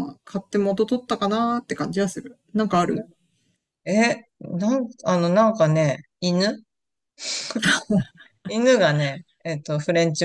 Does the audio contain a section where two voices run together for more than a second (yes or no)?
no